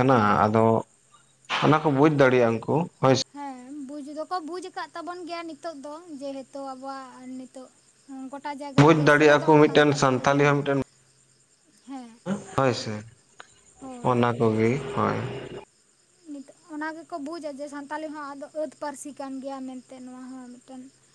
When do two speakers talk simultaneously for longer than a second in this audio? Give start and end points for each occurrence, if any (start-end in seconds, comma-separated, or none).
8.8-10.5